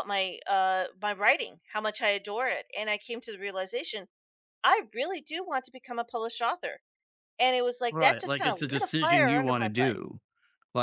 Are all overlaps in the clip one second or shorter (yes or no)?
no